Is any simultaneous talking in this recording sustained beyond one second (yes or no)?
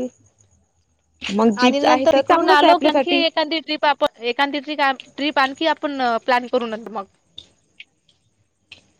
yes